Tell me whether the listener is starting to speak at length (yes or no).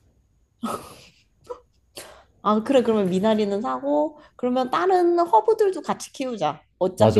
yes